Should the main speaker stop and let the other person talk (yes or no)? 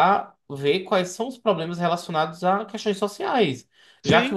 no